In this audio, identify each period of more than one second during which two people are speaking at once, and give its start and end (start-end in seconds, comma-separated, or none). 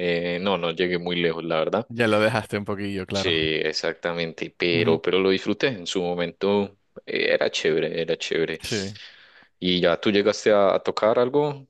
none